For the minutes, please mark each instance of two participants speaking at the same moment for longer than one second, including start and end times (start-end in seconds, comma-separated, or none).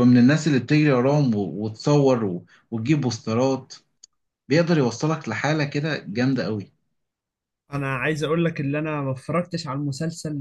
none